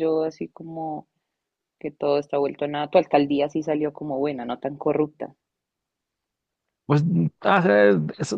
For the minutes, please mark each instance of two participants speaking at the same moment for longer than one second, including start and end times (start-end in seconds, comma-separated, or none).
none